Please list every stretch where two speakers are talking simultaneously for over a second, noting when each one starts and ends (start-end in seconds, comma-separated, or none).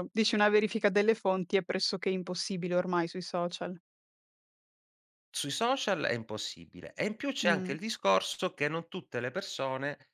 none